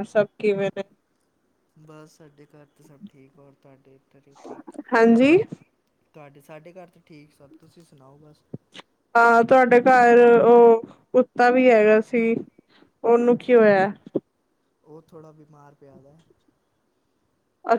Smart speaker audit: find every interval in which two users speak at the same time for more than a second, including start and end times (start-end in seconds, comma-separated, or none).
none